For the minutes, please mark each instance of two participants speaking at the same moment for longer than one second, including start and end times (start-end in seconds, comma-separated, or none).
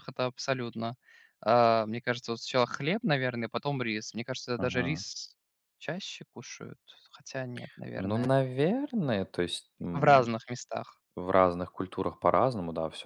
none